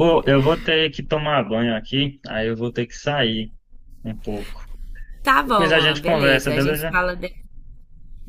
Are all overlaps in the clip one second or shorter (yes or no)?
no